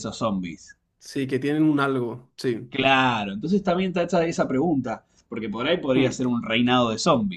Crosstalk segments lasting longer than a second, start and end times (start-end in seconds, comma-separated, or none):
none